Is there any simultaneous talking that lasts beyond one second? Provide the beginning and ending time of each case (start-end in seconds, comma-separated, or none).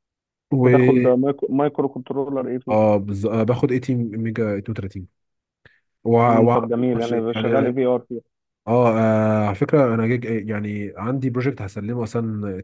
none